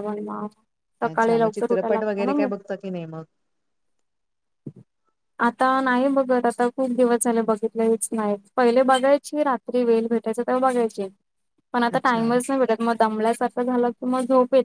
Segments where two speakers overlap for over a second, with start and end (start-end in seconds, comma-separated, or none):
1.1-2.5